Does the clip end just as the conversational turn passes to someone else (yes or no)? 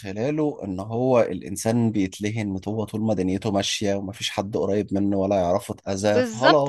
yes